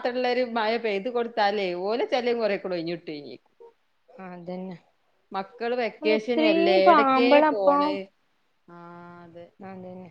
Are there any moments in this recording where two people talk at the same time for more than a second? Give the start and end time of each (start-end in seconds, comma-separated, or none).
6.0-7.4